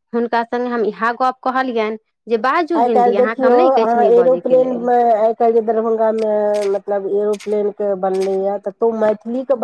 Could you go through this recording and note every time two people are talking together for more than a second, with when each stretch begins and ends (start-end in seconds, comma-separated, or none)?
2.8-4.9